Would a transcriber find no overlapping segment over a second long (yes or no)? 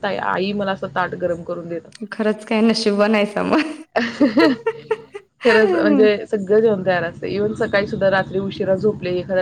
yes